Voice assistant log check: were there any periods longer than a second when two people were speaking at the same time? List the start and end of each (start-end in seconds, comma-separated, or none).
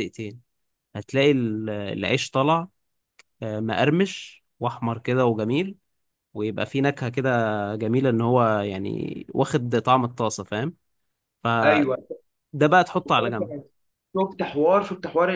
none